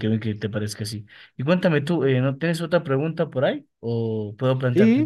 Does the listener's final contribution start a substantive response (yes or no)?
yes